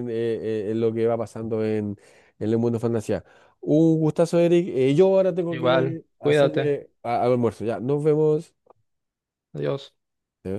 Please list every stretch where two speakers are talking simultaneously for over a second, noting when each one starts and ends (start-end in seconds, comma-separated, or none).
5.5-6.8